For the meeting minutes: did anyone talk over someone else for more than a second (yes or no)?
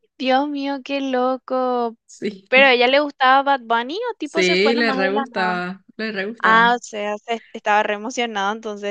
yes